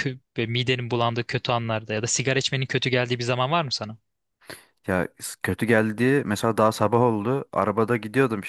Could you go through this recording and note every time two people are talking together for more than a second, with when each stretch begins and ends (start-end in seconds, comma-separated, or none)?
none